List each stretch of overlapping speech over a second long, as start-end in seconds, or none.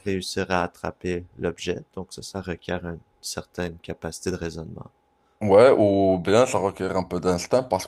none